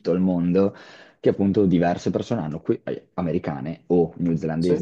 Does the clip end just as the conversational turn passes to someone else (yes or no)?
no